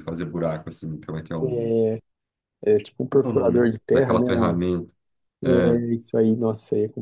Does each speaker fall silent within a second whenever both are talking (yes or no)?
no